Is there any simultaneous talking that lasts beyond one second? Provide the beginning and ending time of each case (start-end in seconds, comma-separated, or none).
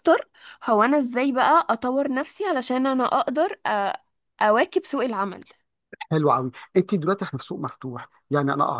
none